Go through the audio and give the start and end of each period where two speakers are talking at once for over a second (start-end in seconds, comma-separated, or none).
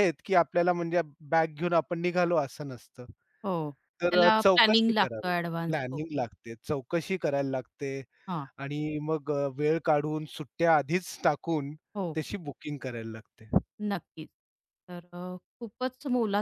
4.1-6.0